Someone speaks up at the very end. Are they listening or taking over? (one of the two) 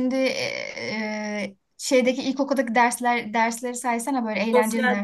taking over